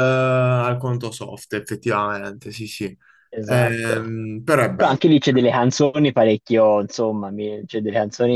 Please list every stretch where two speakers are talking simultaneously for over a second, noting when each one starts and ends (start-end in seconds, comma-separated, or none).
none